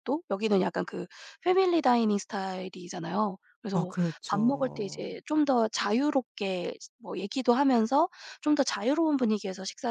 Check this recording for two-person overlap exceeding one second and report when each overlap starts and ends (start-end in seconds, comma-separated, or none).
3.7-5.2